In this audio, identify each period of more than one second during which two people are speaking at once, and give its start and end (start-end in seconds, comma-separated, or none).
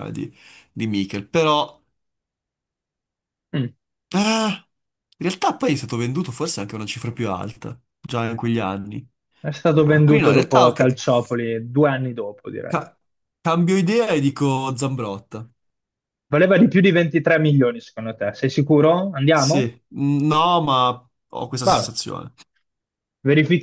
9.7-11.0